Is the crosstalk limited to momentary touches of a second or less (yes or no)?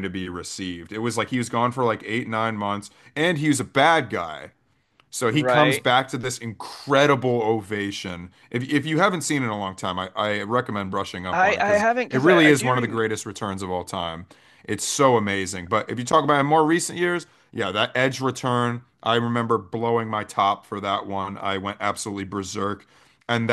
no